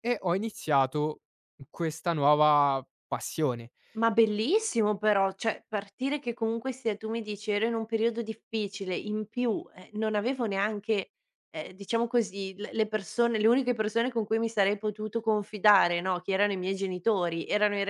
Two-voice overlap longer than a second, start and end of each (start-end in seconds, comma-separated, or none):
none